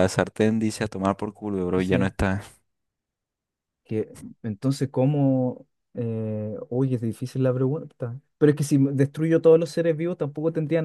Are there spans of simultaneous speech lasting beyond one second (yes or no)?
no